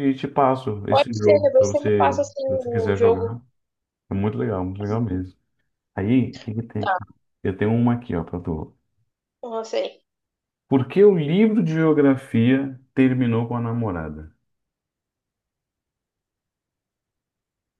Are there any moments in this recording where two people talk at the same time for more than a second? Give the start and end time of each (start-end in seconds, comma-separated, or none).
0.9-3.4